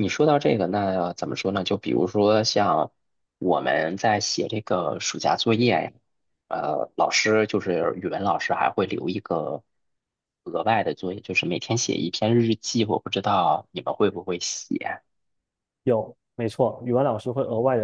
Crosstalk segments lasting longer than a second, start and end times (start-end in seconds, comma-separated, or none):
none